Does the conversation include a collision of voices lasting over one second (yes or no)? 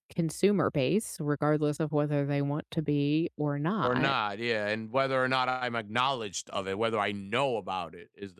no